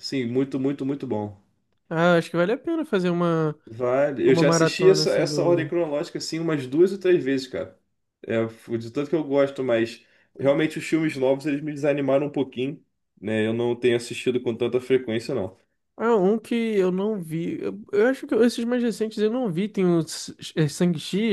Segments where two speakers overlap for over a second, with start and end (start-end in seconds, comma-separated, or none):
4.2-5.7